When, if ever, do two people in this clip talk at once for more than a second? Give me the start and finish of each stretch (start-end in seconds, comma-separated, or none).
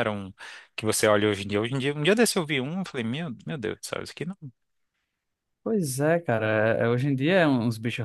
none